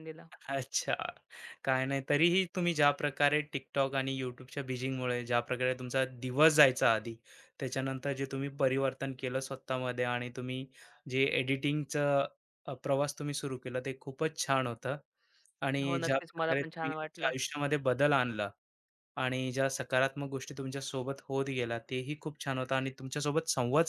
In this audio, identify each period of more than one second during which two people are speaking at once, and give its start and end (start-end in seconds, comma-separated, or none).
15.8-17.3